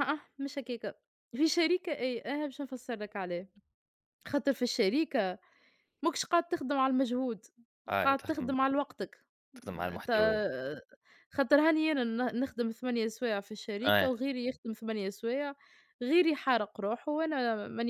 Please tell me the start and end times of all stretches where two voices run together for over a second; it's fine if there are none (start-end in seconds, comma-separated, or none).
none